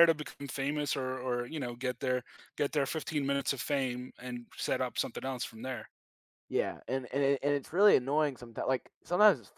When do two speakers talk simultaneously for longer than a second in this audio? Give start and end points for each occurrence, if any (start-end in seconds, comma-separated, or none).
none